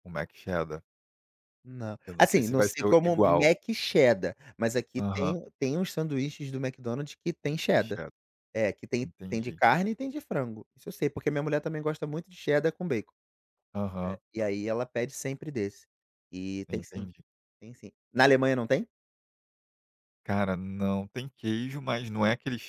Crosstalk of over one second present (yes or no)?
yes